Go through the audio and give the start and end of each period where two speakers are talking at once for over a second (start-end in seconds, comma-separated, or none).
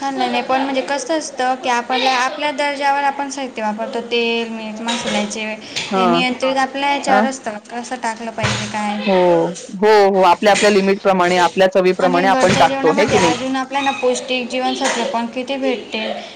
none